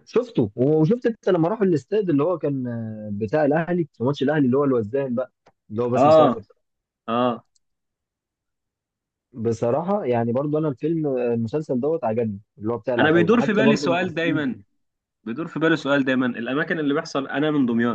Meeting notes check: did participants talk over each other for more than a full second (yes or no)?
yes